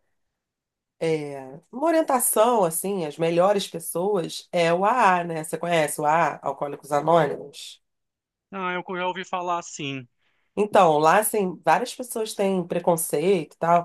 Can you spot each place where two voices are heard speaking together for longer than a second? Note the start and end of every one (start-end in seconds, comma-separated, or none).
none